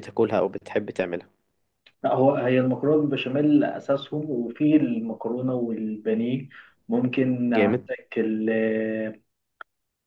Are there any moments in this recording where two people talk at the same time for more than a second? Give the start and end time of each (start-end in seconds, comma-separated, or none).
none